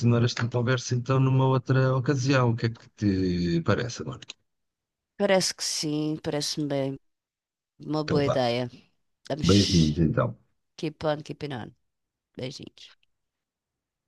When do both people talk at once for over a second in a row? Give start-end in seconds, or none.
none